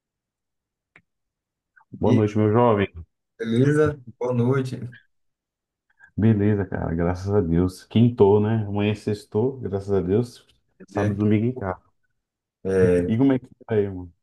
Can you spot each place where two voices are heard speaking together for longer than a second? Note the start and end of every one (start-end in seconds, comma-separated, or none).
none